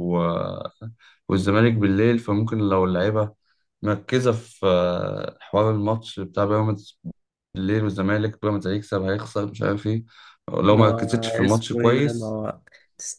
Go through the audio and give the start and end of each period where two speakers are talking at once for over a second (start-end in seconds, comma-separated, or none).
10.7-12.4